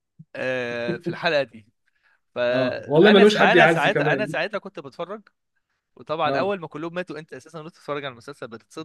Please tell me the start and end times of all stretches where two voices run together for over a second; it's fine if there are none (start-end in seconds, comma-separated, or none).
2.5-4.4